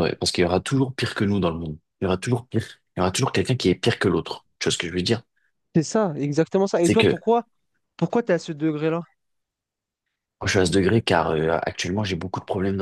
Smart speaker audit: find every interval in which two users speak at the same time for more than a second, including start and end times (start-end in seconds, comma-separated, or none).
none